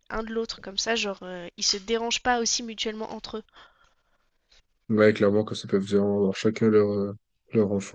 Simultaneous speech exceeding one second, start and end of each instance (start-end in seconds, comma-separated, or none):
none